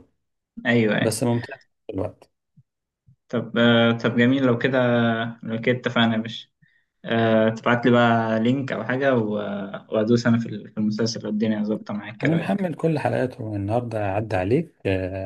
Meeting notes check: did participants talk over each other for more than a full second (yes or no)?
no